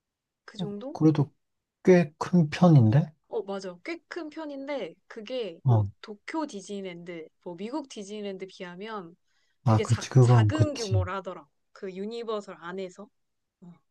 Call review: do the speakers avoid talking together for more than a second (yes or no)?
no